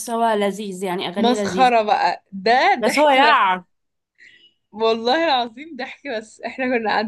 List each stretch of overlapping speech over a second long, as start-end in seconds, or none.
none